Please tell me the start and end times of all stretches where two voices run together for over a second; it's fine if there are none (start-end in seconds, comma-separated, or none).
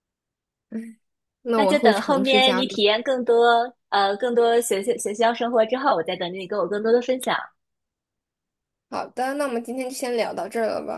1.5-2.8